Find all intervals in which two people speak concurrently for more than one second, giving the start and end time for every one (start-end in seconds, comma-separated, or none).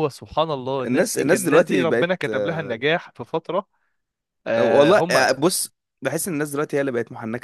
0.8-2.8